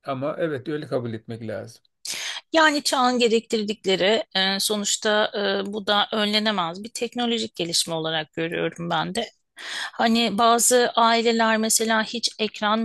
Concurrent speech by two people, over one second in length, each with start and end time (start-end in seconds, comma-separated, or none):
none